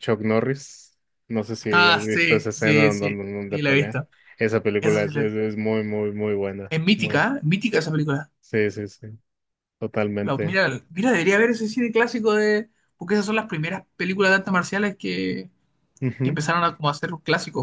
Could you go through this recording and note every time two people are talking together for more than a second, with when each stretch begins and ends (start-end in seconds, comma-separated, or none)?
1.7-4.0